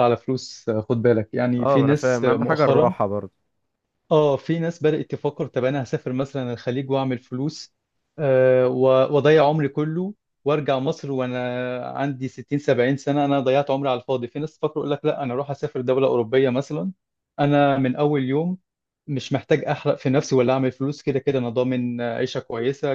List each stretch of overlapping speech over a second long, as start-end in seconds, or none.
1.6-2.9